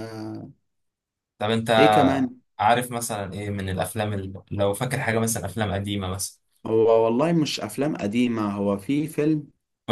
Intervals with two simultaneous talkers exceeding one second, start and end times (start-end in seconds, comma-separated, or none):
none